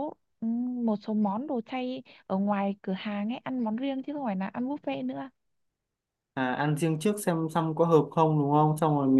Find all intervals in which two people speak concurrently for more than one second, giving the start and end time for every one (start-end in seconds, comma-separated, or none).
none